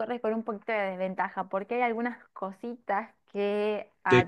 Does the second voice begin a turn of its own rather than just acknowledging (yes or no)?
no